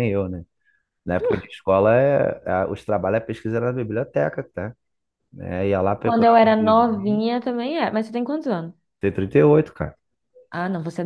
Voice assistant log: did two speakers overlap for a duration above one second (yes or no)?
yes